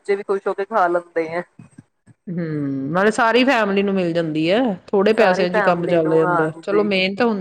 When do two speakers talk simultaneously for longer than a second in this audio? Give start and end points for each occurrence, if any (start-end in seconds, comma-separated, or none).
5.2-6.8